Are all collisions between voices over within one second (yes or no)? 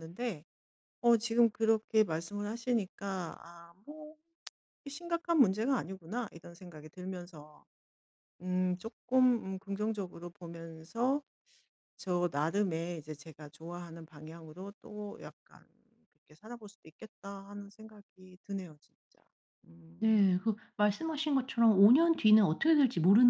yes